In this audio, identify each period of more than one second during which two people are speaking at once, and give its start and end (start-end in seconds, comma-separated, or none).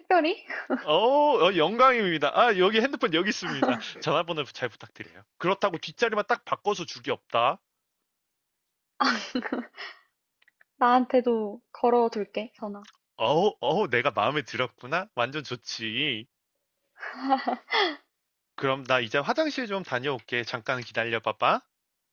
none